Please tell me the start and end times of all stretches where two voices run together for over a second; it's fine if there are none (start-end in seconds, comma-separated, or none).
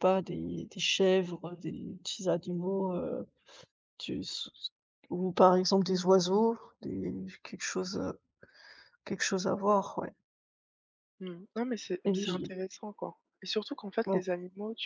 none